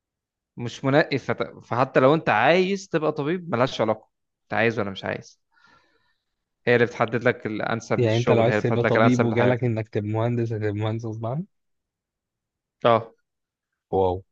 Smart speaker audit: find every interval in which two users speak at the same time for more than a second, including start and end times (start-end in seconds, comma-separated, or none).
8.0-9.7